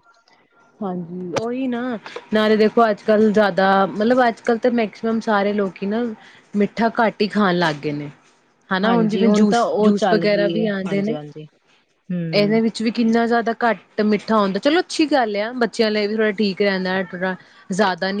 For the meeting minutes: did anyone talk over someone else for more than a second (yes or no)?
yes